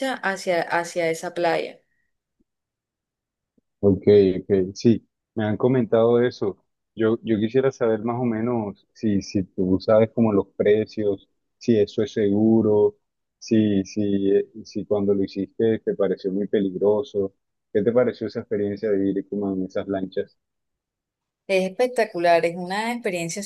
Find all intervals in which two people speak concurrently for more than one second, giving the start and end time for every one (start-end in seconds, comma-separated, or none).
none